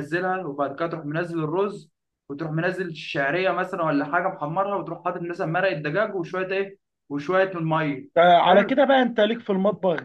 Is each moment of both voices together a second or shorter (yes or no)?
yes